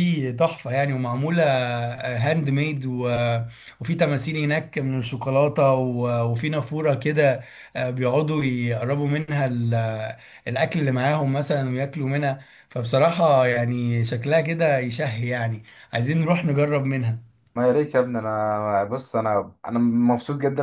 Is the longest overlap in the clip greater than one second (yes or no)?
no